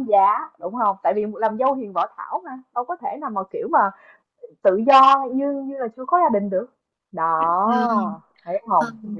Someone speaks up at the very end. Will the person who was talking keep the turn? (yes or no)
no